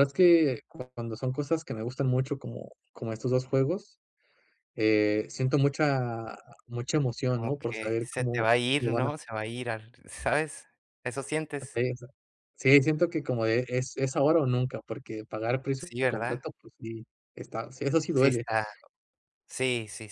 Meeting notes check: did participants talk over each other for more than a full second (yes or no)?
yes